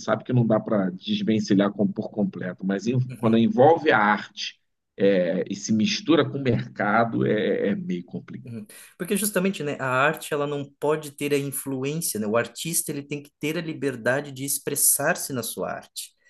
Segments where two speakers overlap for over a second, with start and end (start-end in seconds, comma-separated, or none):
none